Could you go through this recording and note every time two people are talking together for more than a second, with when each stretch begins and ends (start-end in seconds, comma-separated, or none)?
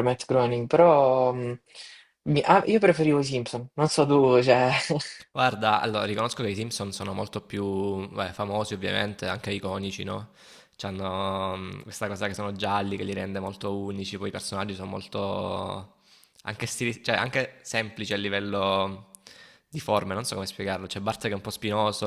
none